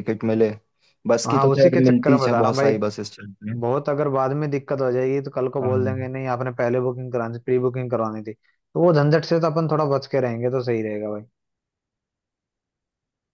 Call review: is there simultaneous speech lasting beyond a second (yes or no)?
yes